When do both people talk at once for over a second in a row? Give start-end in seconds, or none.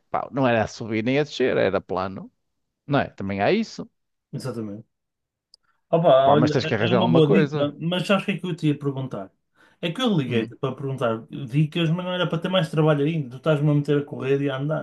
6.2-7.7